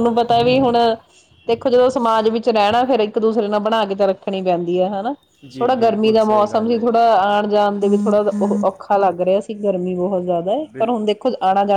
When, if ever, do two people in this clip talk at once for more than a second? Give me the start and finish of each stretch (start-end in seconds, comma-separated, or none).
5.6-7.0